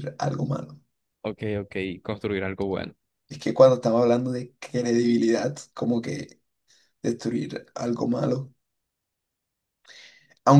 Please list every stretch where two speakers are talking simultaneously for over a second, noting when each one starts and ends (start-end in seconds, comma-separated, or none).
none